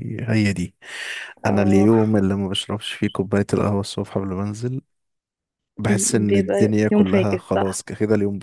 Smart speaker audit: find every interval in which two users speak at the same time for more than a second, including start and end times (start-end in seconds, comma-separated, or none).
6.3-7.9